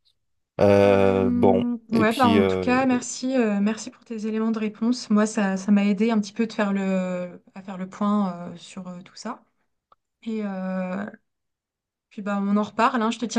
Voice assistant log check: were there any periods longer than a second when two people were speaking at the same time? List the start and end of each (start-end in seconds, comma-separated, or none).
0.8-2.8